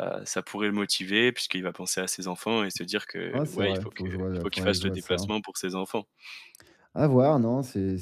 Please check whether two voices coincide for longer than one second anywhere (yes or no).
yes